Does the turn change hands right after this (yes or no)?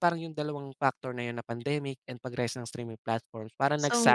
yes